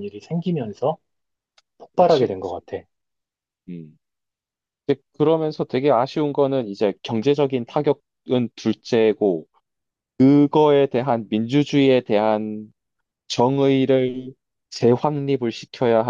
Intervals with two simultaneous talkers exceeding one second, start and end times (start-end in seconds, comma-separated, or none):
none